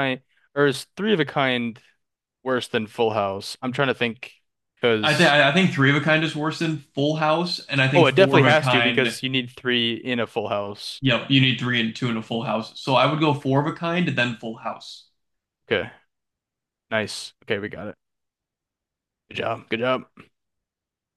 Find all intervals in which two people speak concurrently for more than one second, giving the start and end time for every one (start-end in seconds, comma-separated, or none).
7.9-9.2